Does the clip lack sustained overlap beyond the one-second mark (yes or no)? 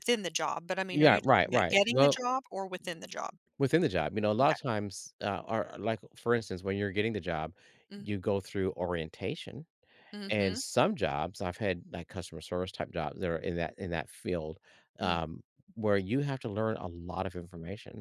no